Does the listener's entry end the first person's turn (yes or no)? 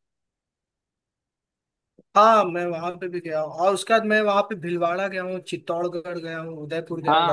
yes